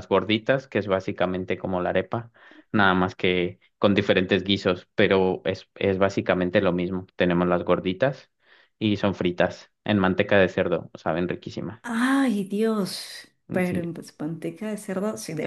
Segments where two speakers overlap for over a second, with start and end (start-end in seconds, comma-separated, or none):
none